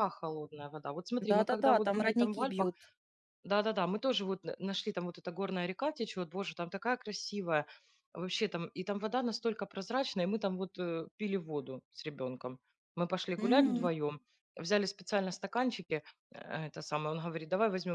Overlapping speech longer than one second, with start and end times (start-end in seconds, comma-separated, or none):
1.3-2.7